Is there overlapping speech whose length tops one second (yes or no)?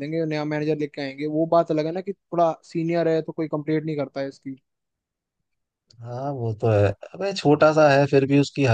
no